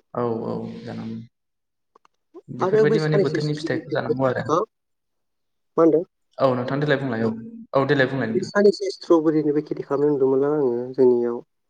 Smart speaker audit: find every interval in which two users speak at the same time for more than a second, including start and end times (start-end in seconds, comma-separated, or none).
2.6-4.1